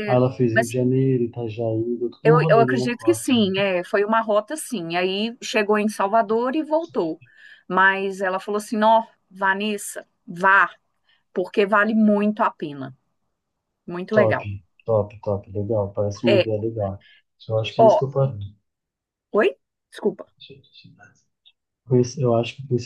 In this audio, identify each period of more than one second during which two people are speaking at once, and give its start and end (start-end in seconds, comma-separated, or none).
2.2-3.5